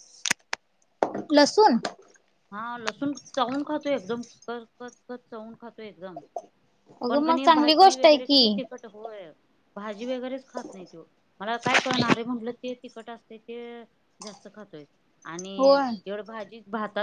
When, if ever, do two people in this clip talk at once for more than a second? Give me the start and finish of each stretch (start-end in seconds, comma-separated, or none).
7.1-8.6